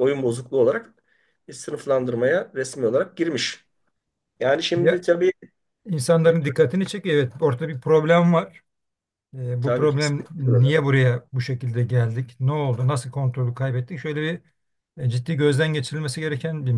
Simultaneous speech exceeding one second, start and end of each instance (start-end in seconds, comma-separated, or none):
9.6-10.9